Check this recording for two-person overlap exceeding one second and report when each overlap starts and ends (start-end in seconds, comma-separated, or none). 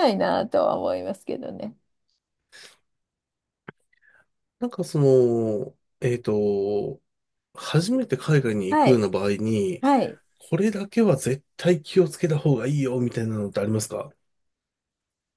none